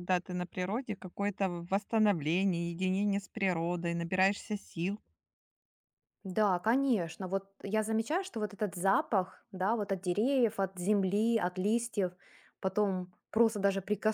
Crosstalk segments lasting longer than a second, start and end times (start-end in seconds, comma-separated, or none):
none